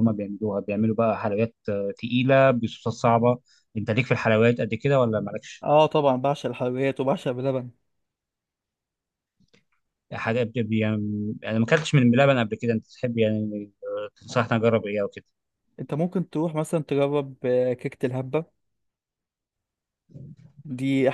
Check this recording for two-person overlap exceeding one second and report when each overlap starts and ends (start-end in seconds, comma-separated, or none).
none